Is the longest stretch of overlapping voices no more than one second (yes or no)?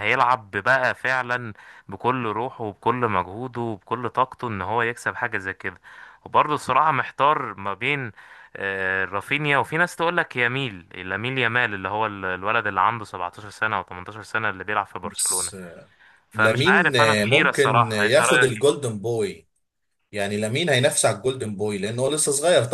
no